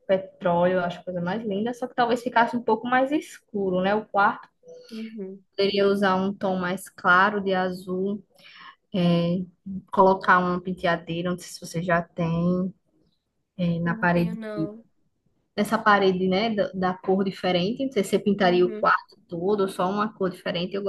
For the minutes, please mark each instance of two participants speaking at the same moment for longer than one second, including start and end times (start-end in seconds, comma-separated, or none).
none